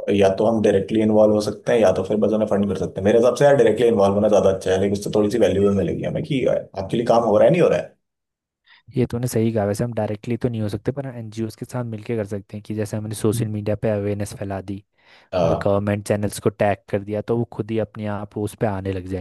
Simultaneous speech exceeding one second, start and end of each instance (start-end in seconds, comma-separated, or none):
none